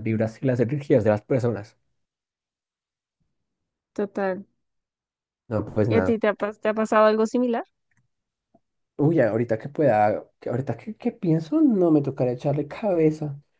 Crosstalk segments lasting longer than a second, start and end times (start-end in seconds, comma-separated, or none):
none